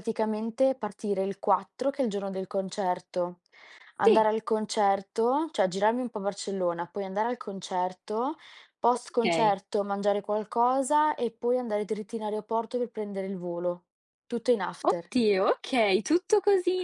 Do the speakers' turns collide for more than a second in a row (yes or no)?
no